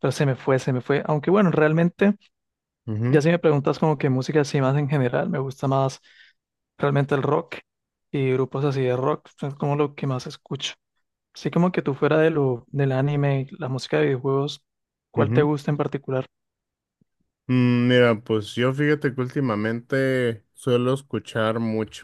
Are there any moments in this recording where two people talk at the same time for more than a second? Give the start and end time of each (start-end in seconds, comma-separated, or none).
none